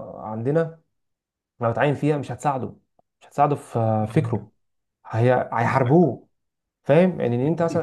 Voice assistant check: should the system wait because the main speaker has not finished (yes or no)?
yes